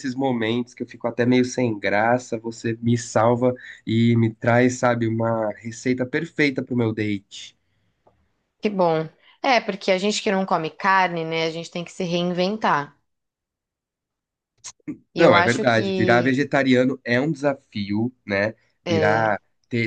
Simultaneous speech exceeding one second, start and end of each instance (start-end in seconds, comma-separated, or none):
15.2-16.4